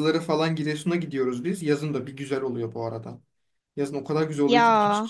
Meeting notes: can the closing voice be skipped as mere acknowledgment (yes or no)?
yes